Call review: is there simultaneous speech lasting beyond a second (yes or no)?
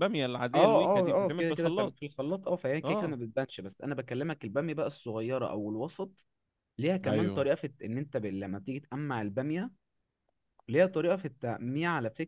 yes